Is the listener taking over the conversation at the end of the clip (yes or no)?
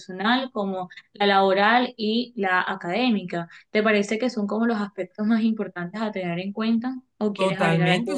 yes